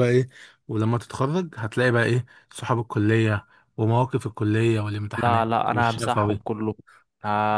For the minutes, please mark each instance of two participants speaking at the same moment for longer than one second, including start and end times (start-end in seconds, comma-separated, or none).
5.1-6.4